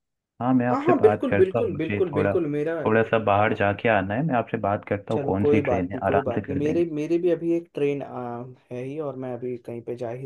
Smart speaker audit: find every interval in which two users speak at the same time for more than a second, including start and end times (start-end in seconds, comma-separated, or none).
0.7-2.7, 5.1-6.9